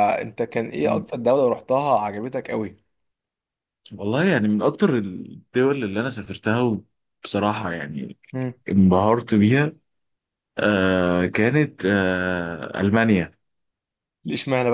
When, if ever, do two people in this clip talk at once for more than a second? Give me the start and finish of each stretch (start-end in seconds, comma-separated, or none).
none